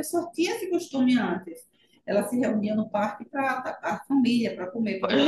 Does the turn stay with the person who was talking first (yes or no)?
no